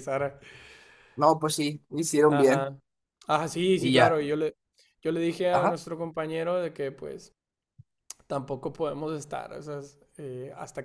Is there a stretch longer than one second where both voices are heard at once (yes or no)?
no